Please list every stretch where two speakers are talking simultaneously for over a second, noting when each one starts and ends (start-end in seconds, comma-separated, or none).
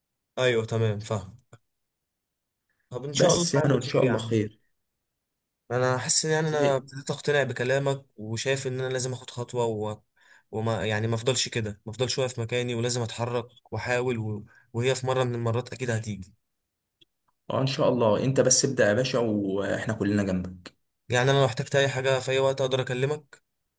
3.1-4.4